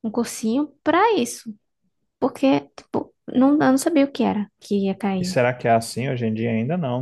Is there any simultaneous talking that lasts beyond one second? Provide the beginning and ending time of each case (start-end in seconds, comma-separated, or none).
none